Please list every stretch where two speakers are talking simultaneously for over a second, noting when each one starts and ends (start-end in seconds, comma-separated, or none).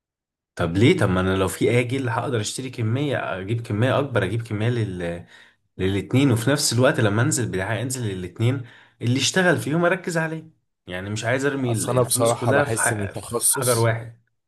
11.6-13.9